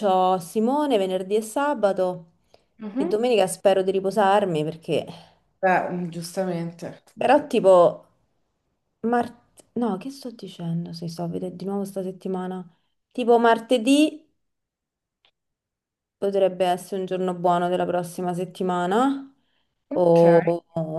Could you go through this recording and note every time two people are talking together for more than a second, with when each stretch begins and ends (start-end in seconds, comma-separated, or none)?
none